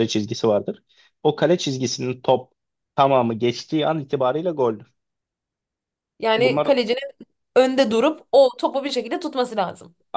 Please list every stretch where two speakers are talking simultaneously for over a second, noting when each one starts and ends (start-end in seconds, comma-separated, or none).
none